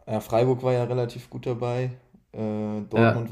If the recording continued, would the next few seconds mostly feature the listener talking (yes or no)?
no